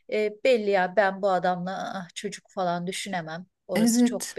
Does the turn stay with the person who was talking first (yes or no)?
no